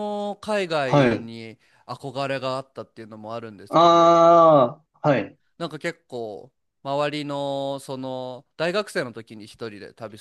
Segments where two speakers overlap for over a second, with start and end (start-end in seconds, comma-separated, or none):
none